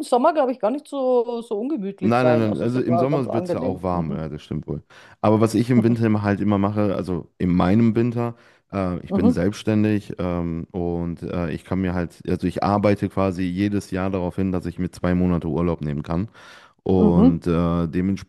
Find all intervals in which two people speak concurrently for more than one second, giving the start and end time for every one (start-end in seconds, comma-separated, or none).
2.0-4.2